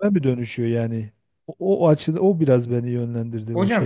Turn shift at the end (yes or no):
yes